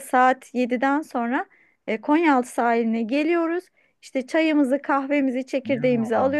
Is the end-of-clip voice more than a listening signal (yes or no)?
no